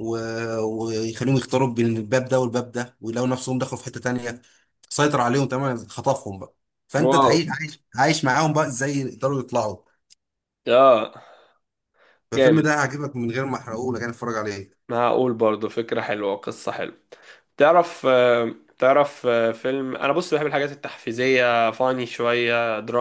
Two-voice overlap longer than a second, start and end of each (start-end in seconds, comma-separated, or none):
none